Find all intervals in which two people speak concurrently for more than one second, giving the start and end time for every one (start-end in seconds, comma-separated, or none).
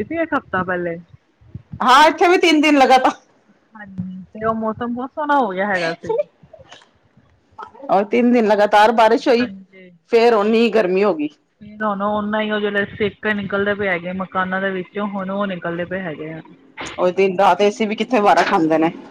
none